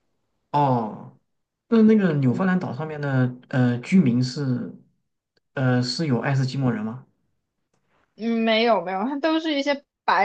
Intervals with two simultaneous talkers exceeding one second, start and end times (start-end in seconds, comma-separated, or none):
none